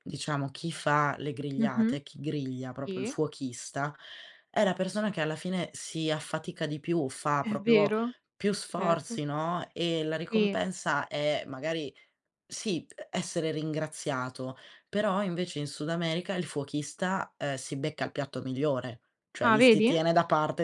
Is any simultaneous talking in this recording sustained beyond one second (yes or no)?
no